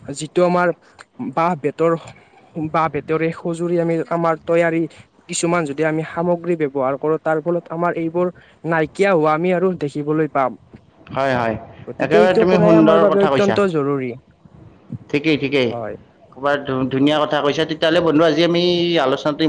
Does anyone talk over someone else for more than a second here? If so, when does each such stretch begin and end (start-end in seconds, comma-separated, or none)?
12.1-13.6